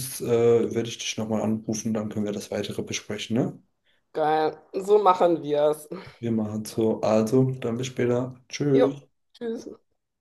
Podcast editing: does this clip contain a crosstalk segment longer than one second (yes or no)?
no